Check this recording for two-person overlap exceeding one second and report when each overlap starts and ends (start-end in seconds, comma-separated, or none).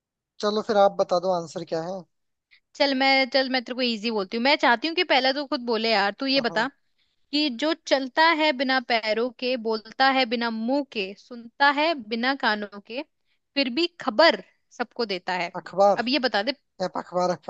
none